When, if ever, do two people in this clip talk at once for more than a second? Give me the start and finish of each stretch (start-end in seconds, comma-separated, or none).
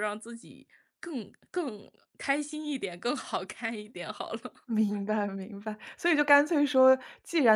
none